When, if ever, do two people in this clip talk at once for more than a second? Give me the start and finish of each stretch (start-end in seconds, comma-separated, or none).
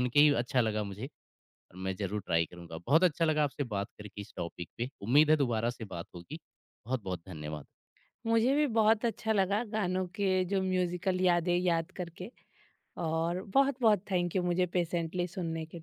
none